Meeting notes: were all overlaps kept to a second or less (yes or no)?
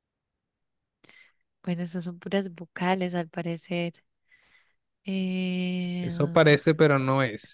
yes